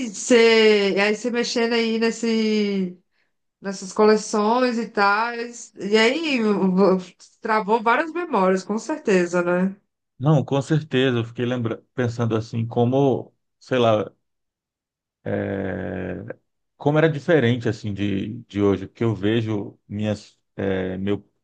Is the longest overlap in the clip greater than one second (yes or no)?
no